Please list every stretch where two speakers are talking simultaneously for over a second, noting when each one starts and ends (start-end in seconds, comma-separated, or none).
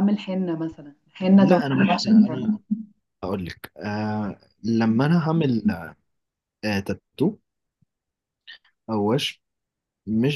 1.4-2.6